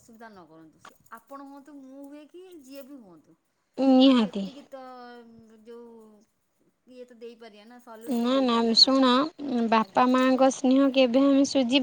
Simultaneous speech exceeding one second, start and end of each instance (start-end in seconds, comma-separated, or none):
none